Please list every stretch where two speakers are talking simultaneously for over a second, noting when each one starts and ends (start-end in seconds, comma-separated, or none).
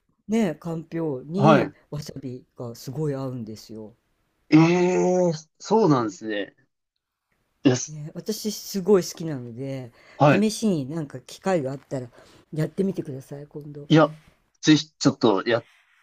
none